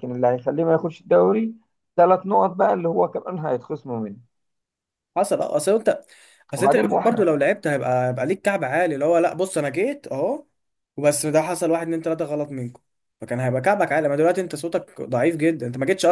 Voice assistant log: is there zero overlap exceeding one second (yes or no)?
yes